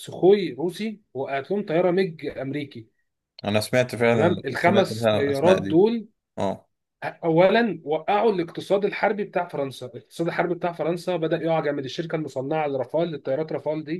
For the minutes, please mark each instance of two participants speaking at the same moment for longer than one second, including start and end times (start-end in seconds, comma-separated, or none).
4.1-5.8